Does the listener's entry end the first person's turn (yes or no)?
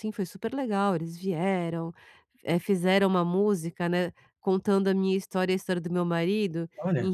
no